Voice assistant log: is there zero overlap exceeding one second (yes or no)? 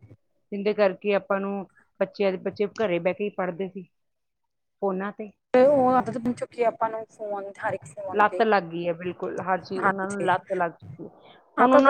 yes